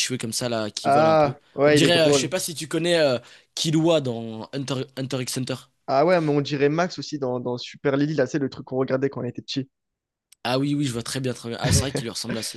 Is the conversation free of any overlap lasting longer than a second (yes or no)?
no